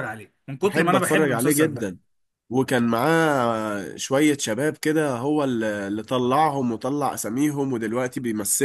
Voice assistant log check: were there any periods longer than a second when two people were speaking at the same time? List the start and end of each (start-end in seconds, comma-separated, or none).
0.6-2.0